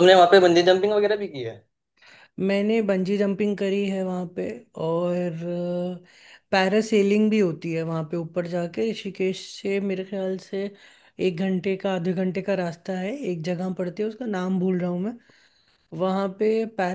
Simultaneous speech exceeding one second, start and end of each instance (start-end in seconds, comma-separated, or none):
none